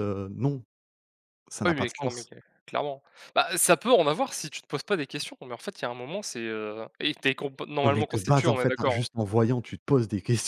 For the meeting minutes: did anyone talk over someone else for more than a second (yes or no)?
yes